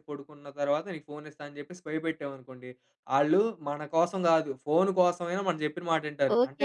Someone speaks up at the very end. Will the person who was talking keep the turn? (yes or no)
no